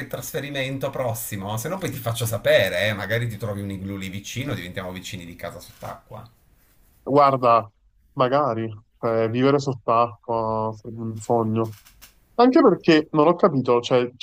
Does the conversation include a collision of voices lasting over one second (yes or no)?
no